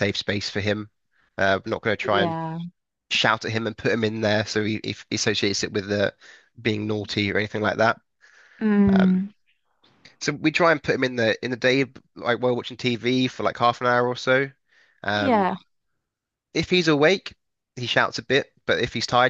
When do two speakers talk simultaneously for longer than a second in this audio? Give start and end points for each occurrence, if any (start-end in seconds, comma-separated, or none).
none